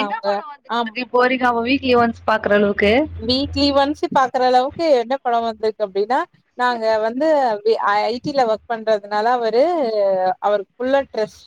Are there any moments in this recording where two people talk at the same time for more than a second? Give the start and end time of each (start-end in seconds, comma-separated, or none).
none